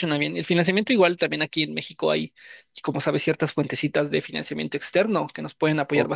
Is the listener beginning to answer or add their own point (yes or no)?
no